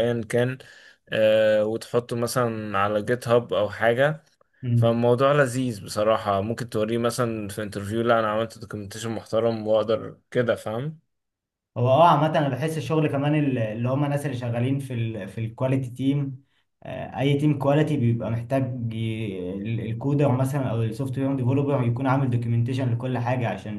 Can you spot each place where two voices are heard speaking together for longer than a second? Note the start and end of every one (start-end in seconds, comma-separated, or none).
none